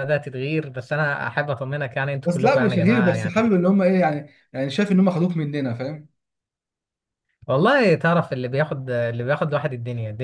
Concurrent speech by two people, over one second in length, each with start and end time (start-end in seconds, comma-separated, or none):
2.2-3.5